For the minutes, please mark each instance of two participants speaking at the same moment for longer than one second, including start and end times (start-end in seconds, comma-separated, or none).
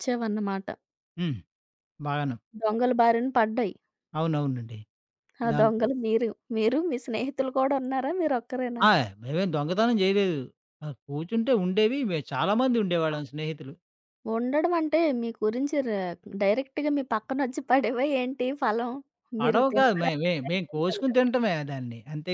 19.4-21.3